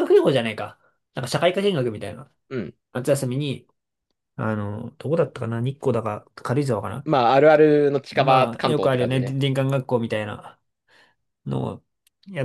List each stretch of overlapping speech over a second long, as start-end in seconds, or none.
8.1-9.4